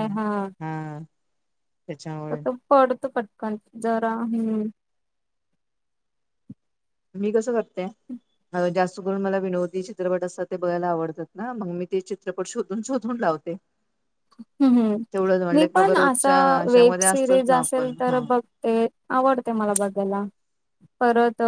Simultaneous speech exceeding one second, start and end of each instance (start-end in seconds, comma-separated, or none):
16.0-18.2